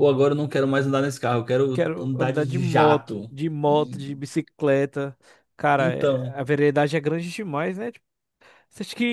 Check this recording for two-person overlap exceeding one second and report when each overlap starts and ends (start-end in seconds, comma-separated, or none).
1.7-3.3